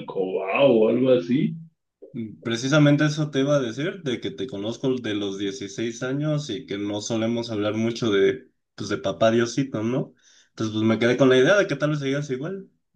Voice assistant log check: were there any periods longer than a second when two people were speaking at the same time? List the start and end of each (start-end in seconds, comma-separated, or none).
none